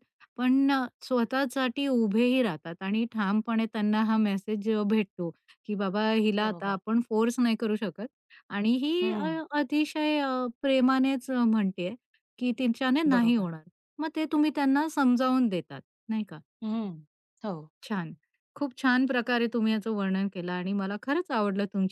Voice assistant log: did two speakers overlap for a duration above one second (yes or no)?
no